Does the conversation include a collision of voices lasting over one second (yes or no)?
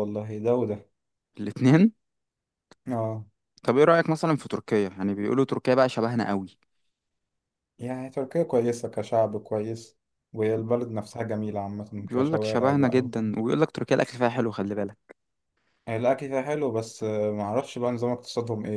yes